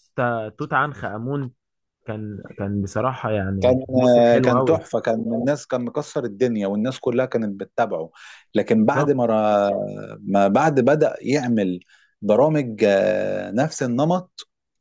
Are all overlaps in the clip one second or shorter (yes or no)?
yes